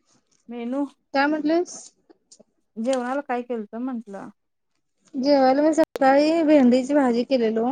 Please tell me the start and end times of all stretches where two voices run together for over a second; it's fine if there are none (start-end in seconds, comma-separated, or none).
none